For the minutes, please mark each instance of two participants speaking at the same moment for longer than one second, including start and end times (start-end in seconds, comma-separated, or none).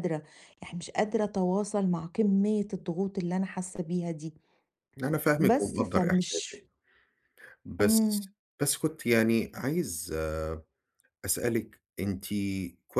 5.4-6.6